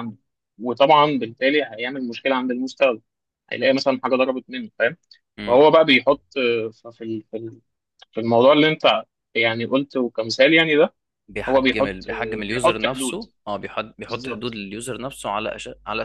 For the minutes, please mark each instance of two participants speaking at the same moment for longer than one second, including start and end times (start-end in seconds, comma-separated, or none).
11.5-13.2